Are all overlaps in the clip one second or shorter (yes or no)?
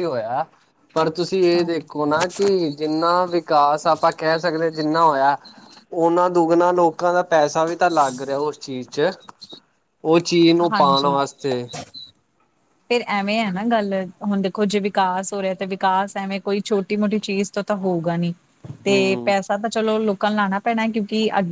yes